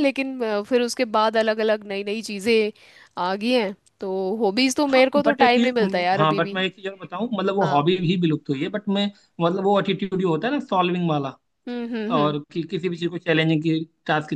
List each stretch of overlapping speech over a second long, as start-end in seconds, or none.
4.9-6.6